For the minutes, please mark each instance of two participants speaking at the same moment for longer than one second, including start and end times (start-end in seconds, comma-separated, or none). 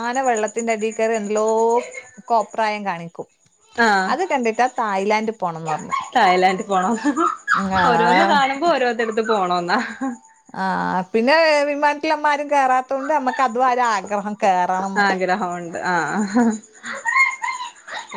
none